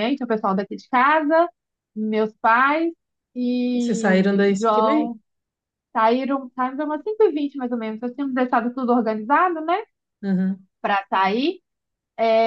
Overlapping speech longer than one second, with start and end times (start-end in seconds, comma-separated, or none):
3.7-5.1